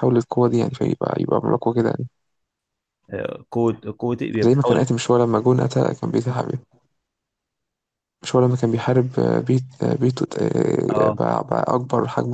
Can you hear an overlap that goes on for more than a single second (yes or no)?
no